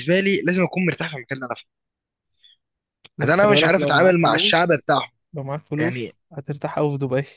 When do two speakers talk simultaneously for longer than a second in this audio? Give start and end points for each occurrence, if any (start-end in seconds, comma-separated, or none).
3.2-4.9